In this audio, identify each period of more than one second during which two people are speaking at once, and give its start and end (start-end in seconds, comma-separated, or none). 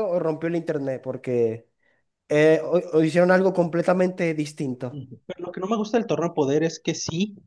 none